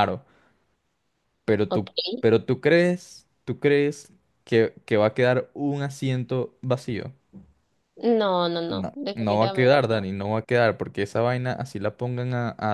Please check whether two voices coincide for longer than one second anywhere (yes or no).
yes